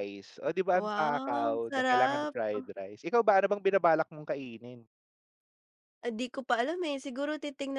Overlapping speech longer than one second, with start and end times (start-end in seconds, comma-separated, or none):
0.7-2.3